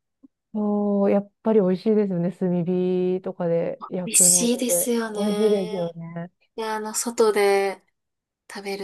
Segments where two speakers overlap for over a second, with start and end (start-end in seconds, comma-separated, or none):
4.0-6.0